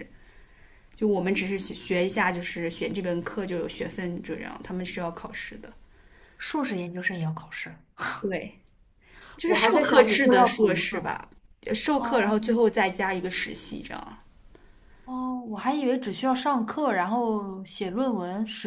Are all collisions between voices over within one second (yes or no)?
no